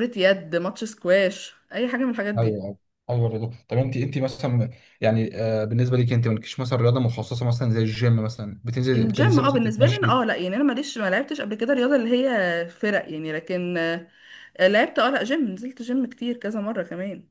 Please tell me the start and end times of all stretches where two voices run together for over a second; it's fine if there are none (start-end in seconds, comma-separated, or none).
8.9-10.2